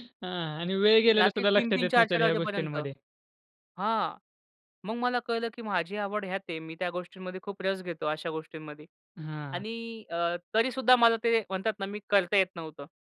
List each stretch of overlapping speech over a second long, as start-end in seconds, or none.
1.2-2.8